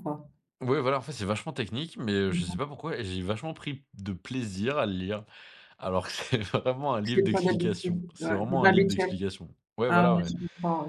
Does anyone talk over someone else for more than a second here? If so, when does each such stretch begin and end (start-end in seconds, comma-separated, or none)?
7.0-9.1